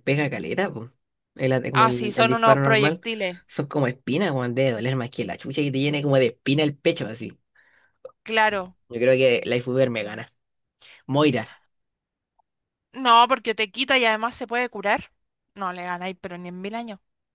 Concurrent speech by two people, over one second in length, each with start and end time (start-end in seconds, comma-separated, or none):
1.7-3.0